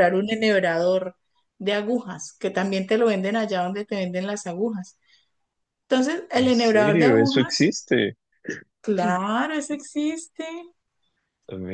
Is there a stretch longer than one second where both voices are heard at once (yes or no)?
yes